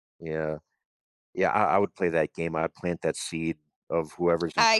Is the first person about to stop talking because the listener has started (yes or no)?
no